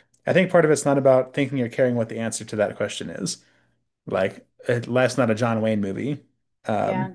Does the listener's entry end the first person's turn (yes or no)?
no